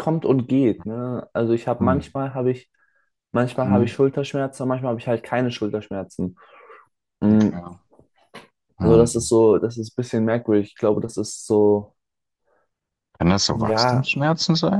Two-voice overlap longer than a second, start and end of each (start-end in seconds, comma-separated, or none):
none